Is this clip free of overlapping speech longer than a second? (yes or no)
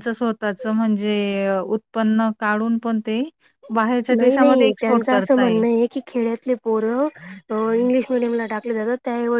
no